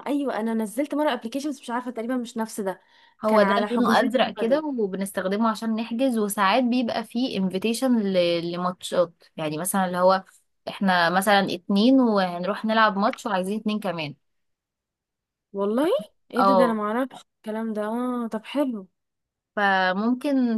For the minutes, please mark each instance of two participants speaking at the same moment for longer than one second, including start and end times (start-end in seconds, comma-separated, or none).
3.3-4.6